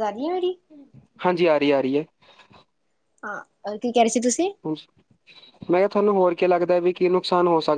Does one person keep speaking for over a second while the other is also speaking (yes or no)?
no